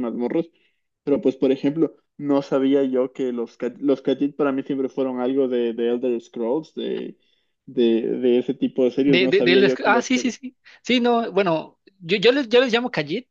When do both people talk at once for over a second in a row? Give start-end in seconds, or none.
9.1-10.3